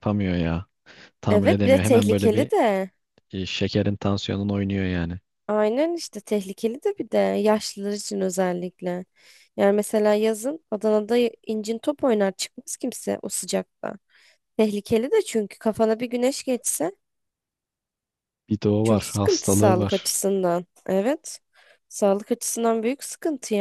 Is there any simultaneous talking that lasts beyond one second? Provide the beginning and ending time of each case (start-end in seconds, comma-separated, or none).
1.3-2.5, 18.8-20.1